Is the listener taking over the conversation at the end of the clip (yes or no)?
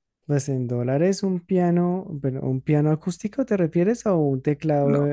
yes